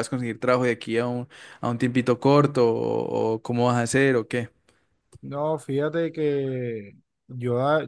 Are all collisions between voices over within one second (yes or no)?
yes